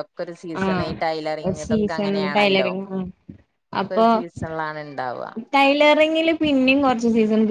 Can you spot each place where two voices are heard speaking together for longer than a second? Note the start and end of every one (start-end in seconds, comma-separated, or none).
none